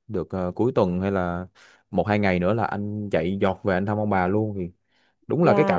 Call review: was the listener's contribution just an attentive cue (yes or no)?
yes